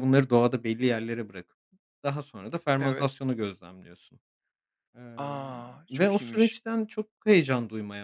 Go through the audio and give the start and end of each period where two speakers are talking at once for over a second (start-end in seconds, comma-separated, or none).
5.2-6.5